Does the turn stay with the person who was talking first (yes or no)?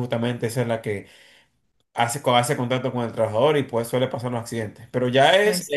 yes